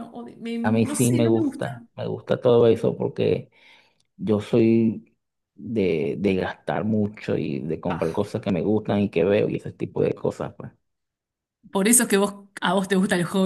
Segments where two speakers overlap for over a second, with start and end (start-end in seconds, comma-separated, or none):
0.6-1.8